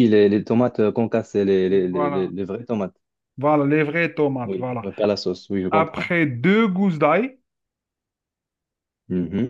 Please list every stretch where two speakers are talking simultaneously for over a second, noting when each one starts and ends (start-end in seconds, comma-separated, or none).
none